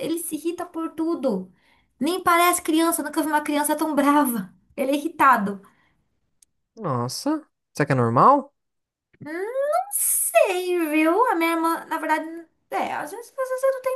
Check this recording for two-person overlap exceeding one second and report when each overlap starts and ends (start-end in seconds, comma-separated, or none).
none